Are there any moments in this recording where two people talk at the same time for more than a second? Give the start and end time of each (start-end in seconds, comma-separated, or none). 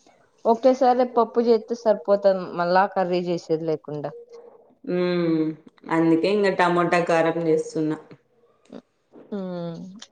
none